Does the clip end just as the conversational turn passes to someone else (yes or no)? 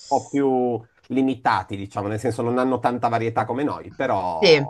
yes